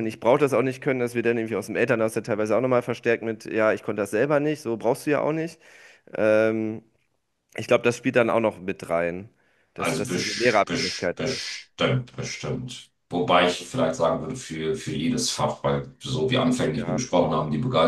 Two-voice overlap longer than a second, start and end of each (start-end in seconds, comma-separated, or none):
9.8-11.5